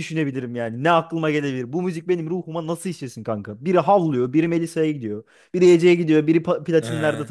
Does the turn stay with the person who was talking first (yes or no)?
no